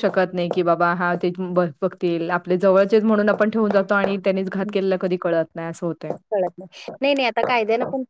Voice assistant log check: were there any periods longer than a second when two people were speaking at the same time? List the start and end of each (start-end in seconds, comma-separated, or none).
none